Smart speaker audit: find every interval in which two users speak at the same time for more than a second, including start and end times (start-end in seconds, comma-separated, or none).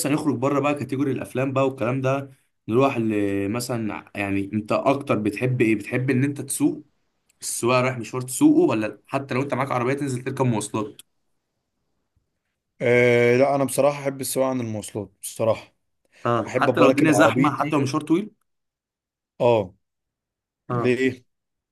16.5-17.8